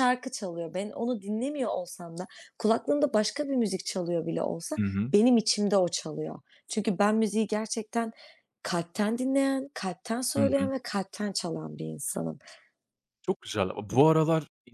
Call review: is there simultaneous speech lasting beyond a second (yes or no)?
no